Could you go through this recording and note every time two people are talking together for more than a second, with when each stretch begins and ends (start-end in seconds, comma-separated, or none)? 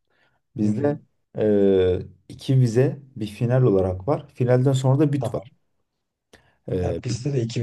none